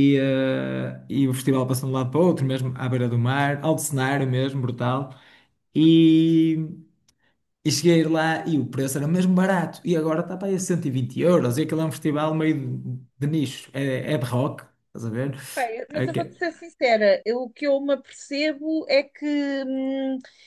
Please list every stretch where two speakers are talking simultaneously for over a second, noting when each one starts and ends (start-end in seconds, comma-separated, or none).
none